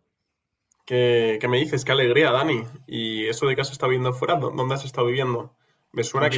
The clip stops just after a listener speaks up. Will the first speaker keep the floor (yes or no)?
yes